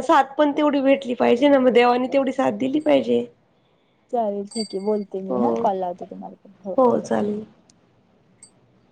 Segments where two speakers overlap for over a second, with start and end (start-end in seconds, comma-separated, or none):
none